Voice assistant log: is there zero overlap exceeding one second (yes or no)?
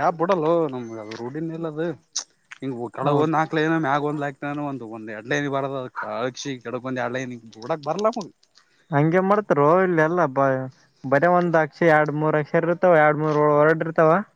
yes